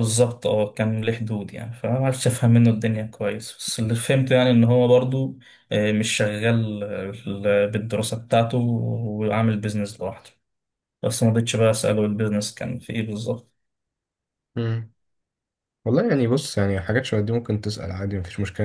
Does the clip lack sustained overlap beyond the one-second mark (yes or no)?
yes